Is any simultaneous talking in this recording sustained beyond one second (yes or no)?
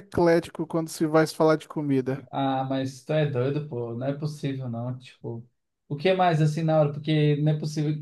no